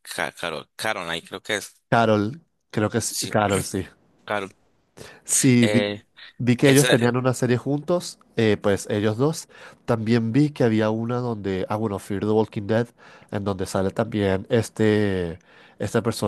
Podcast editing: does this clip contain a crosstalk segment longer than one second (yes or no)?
no